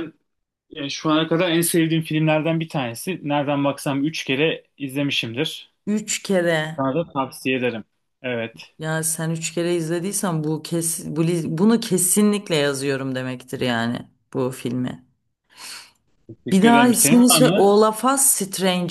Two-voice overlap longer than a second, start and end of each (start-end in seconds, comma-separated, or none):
16.5-17.7